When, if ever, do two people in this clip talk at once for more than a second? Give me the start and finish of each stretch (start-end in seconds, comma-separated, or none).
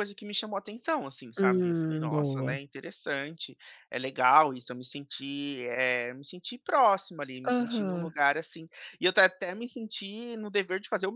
1.4-2.6